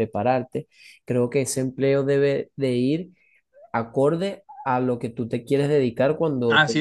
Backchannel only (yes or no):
no